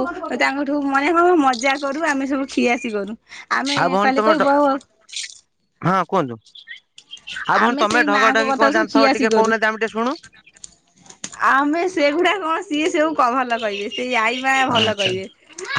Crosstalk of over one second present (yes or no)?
yes